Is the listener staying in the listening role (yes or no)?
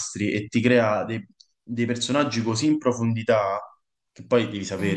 yes